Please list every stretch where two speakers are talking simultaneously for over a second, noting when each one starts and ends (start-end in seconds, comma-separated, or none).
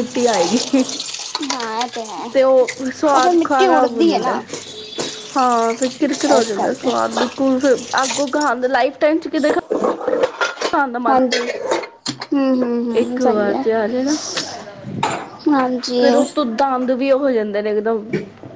3.0-4.4